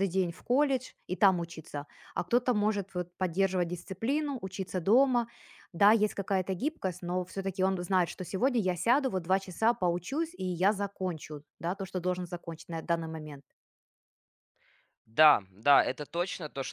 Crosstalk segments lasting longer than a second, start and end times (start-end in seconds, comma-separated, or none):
none